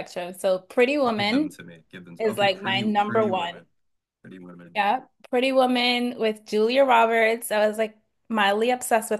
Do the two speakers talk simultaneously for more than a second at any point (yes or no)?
yes